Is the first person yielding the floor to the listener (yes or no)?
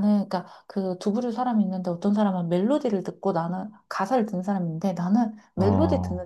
no